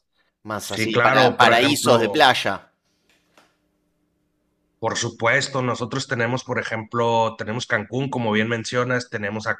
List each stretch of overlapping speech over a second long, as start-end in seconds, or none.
0.6-2.3